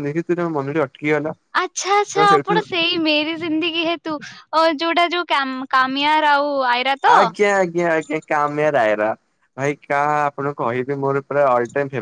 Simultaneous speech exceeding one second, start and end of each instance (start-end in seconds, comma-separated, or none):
none